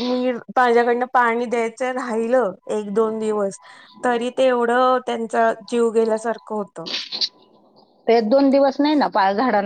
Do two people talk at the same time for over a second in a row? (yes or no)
no